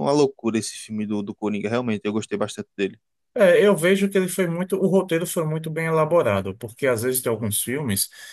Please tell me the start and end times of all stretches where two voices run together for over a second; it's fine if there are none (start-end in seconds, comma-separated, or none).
none